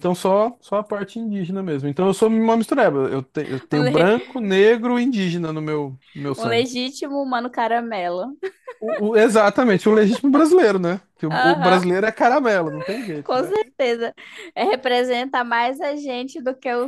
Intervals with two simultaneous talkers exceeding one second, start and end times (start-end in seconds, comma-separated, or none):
none